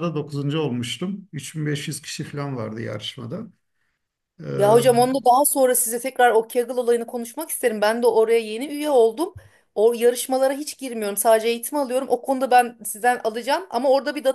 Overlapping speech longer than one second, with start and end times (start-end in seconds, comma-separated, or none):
none